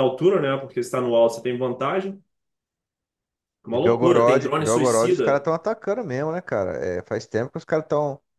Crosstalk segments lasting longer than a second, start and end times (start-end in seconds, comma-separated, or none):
3.7-5.5